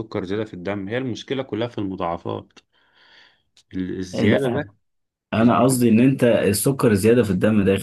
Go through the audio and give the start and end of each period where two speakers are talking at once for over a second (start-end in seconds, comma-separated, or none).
none